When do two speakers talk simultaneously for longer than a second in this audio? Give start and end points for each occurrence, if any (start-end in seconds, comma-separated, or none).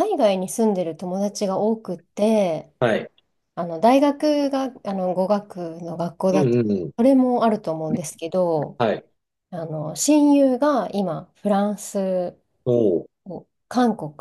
none